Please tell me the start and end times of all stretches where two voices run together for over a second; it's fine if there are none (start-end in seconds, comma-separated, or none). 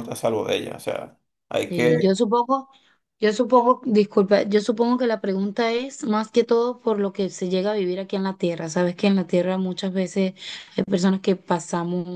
none